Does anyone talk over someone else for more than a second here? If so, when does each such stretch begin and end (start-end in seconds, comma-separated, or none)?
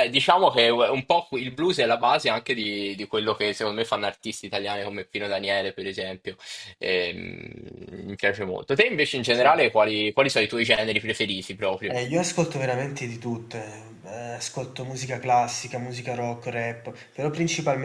none